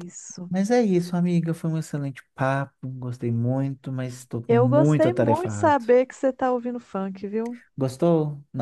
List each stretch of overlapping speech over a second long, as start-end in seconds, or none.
4.5-5.8